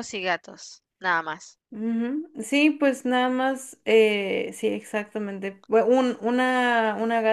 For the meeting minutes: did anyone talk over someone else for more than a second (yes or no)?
no